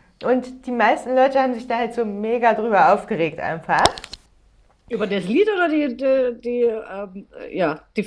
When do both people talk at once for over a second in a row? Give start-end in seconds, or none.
none